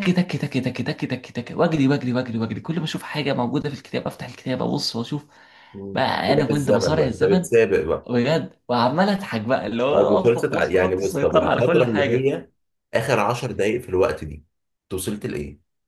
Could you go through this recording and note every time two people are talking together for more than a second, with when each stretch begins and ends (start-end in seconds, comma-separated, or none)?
5.9-7.5, 9.9-12.3